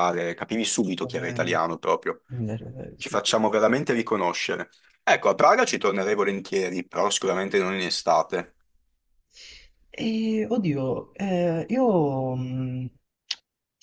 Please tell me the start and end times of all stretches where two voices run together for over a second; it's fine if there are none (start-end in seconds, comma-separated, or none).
none